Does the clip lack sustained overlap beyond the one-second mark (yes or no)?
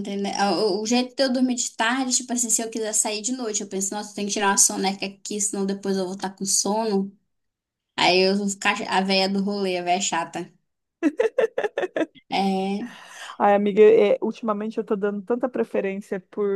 yes